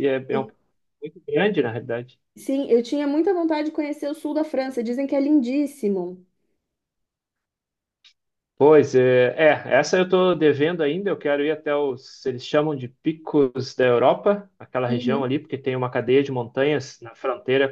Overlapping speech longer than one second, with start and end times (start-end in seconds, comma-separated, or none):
none